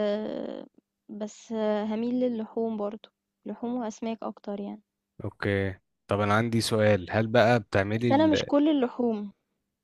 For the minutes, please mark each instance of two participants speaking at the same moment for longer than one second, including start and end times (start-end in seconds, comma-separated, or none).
none